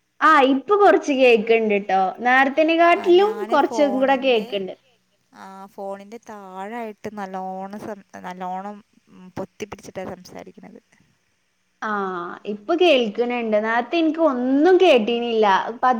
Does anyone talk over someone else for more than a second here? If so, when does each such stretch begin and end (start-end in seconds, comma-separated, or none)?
none